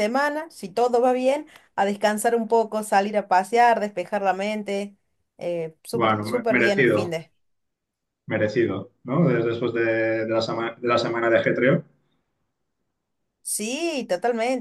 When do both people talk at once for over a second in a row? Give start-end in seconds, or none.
5.9-7.2